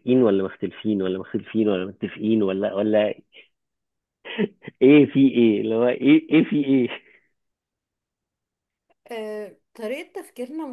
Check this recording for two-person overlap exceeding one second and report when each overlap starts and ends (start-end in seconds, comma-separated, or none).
none